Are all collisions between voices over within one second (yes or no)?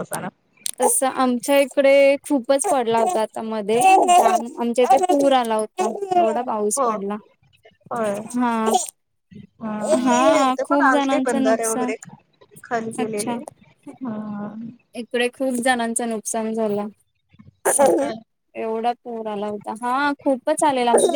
no